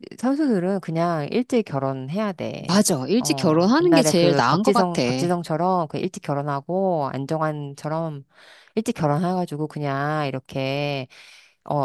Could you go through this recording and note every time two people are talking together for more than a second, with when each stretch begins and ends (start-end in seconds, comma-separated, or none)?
2.6-5.0